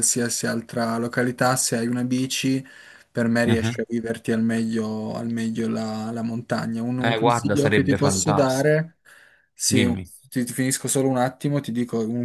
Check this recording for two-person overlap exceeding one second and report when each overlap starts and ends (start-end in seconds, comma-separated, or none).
7.0-8.9